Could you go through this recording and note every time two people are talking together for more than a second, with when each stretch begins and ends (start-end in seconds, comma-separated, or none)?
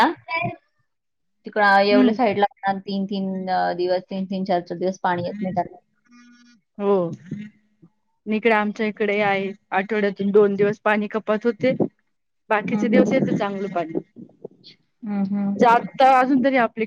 none